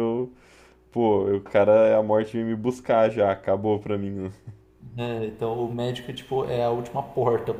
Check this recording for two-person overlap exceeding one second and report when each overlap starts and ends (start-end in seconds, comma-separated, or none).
none